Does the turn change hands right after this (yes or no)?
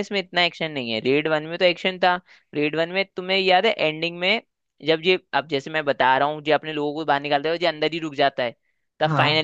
no